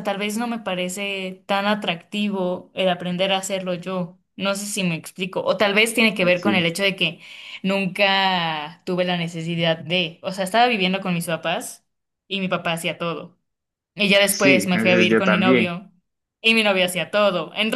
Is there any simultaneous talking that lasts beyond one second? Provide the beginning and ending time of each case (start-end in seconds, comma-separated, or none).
14.3-15.7